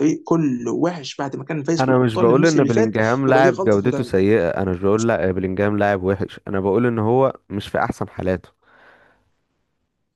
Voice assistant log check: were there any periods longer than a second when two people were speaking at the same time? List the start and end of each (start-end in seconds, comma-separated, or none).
1.8-4.1